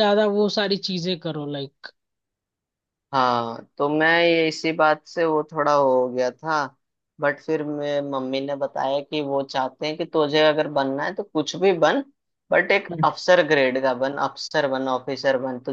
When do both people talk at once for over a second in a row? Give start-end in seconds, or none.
none